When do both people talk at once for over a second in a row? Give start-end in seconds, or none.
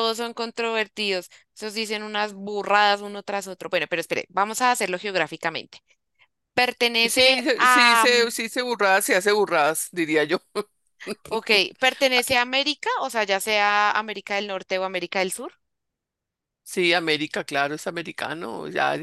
7.0-8.3